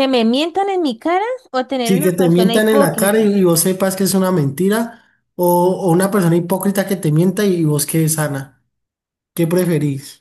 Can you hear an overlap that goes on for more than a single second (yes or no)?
yes